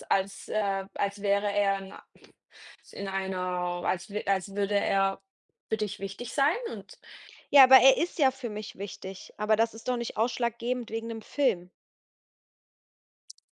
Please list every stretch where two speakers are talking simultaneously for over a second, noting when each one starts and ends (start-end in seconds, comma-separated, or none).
none